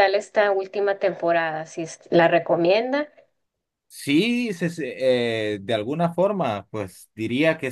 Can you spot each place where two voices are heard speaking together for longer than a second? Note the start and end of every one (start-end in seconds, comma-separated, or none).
none